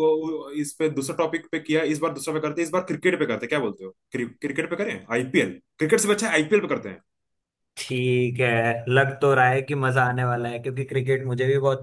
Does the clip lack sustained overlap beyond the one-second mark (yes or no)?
yes